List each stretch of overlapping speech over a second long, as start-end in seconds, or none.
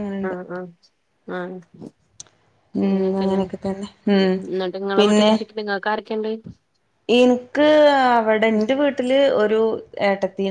none